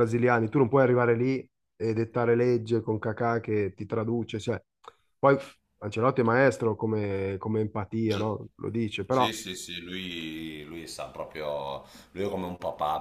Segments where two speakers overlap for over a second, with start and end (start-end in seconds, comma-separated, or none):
none